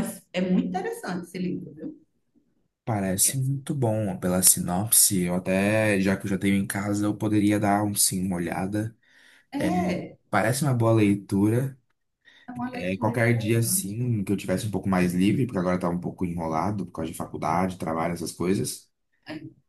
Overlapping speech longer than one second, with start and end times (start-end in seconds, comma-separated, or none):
12.7-14.0